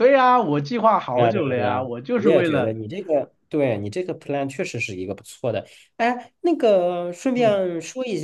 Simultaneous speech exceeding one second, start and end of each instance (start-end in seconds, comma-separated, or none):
1.1-2.8